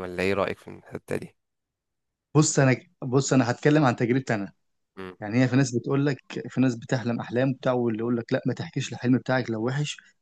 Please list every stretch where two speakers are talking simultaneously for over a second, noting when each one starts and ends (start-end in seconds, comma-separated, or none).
none